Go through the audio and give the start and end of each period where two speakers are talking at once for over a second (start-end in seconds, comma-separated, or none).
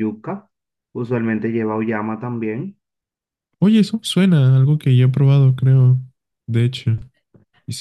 none